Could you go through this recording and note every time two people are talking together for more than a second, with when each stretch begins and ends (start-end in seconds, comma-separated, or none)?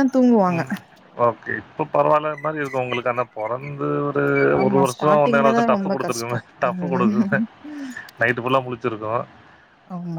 4.6-7.4